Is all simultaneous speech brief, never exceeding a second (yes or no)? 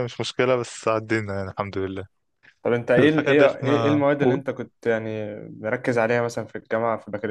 no